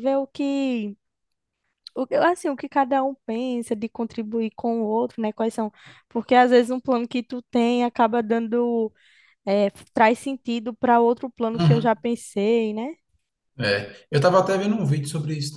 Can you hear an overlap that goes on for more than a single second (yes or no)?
no